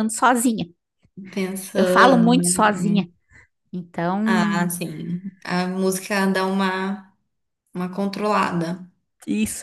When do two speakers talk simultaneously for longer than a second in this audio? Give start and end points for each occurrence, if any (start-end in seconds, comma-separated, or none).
1.7-3.0